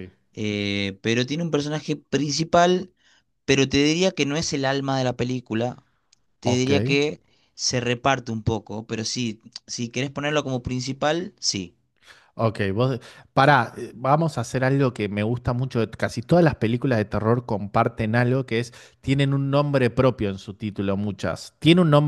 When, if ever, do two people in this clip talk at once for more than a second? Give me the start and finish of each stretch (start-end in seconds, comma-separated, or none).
none